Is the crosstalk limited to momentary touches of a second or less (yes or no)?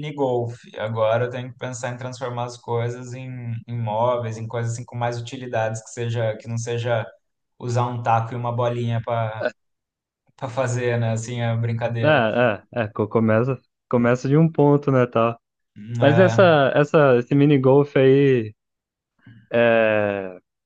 yes